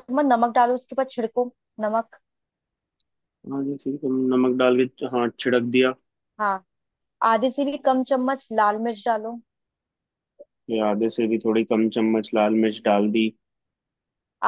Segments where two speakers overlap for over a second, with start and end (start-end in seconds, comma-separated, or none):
none